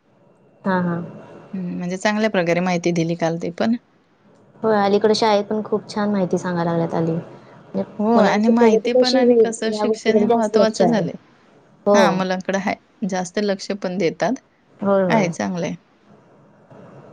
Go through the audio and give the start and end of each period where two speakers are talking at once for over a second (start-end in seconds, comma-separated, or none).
8.0-11.0